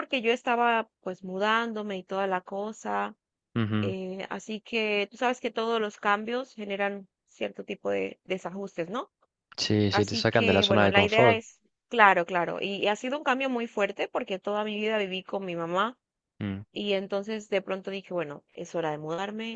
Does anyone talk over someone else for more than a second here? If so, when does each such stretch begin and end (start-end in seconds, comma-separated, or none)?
9.9-11.4